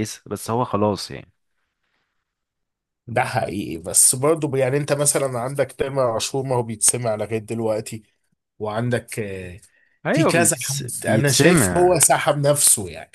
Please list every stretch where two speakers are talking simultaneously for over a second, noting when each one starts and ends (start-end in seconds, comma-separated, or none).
10.1-12.0